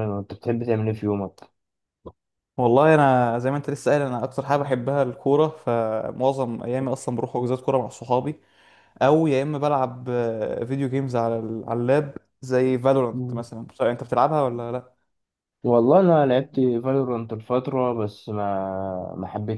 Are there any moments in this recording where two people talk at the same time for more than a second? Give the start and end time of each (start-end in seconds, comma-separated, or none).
none